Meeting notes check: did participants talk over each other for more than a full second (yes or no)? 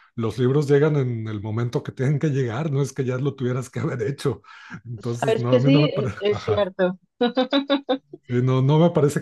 yes